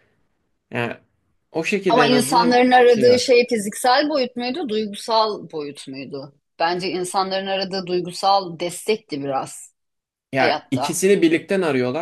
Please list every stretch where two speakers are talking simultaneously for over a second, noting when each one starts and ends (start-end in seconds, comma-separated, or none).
1.9-3.3